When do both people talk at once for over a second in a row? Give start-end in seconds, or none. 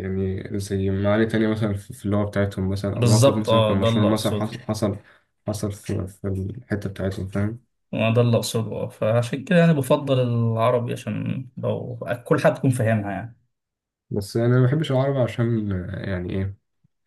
2.9-4.5